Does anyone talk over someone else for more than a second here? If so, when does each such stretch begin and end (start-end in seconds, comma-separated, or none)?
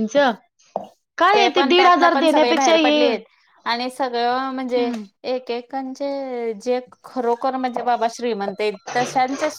1.6-3.1